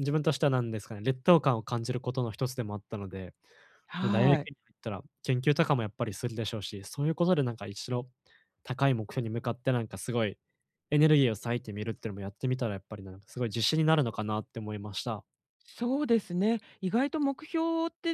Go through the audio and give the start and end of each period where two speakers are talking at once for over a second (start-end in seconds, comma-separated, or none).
none